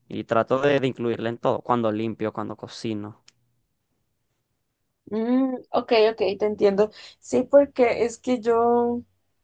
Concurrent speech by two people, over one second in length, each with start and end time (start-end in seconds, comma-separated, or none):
none